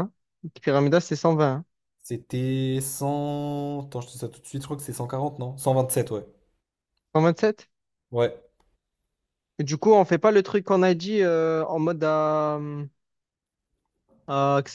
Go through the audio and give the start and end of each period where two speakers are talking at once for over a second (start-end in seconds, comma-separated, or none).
none